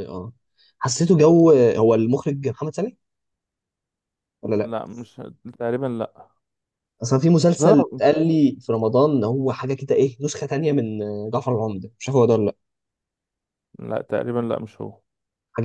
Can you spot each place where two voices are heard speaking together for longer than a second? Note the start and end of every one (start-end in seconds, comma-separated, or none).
none